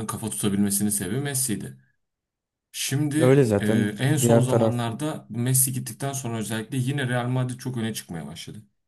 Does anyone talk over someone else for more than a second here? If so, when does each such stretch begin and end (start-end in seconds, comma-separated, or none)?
3.2-4.8